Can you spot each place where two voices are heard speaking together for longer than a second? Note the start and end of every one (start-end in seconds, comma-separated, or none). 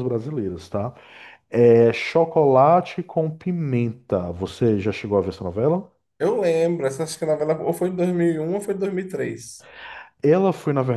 none